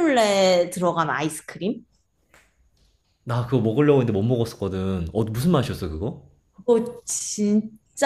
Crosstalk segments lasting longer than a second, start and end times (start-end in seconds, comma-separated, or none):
none